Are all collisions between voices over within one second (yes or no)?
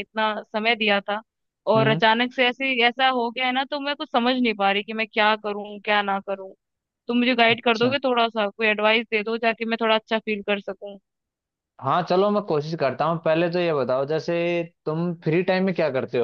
yes